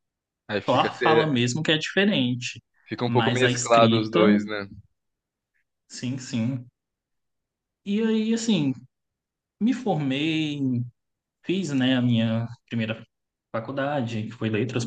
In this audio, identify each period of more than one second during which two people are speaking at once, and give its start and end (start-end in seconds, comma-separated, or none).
3.0-4.4